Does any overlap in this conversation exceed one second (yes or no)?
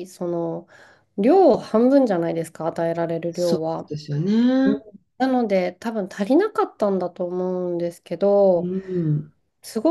no